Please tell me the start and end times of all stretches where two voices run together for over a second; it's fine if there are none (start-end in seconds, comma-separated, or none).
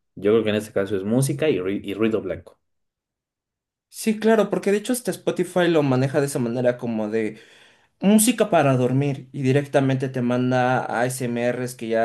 none